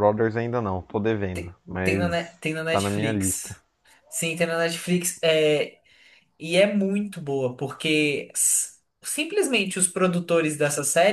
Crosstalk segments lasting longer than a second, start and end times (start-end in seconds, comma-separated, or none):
1.3-3.5